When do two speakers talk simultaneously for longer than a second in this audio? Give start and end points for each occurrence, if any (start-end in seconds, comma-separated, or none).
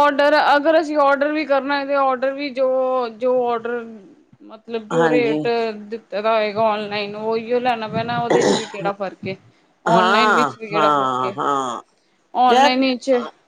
9.9-11.3